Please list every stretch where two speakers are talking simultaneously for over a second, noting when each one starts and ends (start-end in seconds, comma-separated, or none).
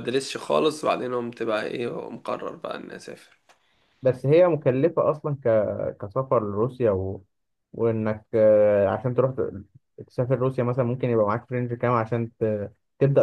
none